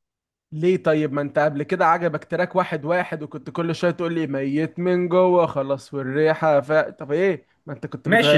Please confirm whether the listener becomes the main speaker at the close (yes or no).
yes